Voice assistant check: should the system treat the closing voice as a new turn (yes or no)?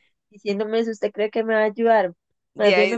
no